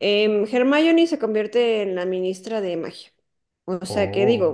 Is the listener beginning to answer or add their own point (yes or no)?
no